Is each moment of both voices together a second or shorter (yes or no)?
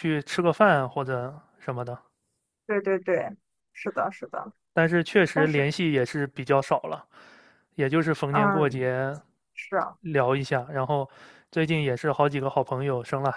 yes